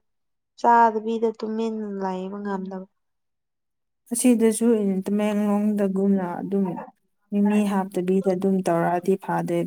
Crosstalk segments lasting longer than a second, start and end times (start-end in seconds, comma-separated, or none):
none